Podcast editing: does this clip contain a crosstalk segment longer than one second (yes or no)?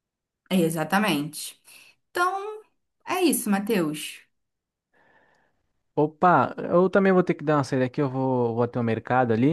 no